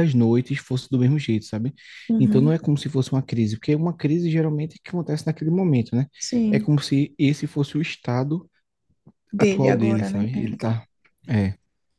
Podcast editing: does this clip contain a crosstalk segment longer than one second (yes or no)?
yes